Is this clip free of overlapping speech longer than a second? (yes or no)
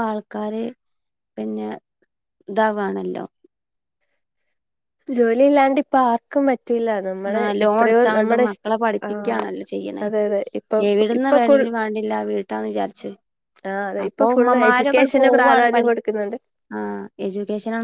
no